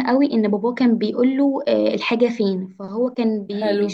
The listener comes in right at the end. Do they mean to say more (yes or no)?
no